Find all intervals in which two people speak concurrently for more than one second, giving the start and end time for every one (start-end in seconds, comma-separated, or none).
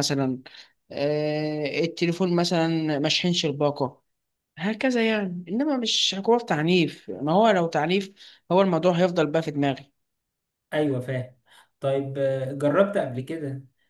none